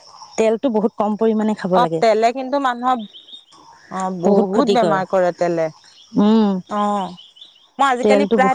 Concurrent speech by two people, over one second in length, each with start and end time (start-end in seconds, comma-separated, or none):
none